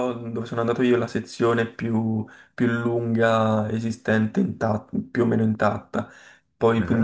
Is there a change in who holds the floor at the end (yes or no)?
no